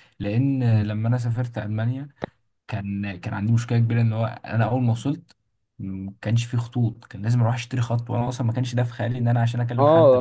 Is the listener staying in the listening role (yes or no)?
no